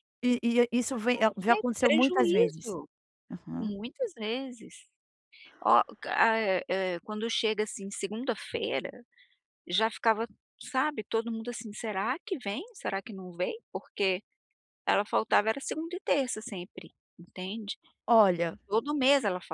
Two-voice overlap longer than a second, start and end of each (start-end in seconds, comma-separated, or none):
1.1-2.8